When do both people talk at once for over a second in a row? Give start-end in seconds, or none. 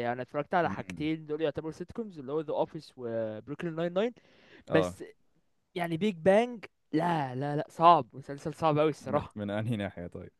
none